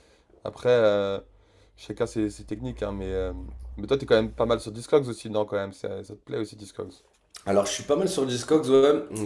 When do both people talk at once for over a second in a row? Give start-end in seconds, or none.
none